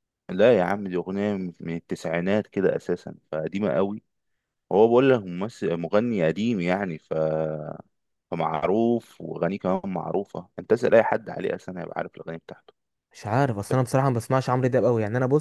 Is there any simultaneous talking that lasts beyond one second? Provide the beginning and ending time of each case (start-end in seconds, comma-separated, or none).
none